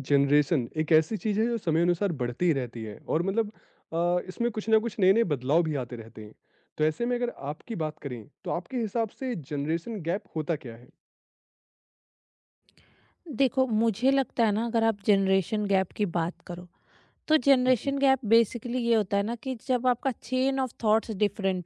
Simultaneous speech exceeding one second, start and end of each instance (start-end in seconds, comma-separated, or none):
none